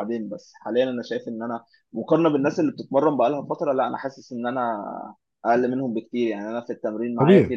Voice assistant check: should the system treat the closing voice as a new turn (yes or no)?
no